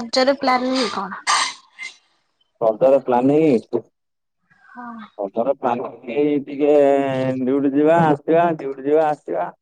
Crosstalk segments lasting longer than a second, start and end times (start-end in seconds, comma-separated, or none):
none